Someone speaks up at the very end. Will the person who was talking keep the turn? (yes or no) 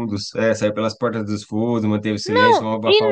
no